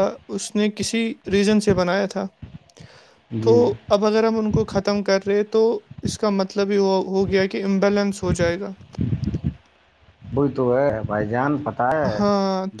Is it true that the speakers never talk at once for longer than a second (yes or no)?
yes